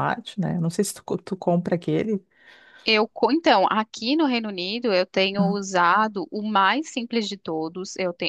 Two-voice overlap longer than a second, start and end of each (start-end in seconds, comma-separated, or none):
none